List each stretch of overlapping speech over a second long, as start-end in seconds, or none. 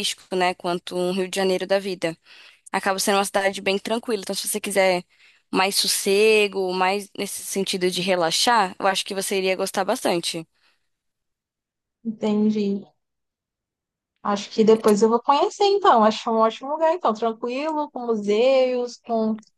none